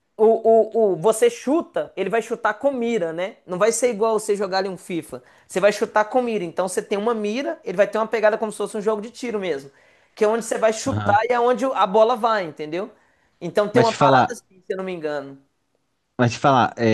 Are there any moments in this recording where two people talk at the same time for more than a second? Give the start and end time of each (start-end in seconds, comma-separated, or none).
none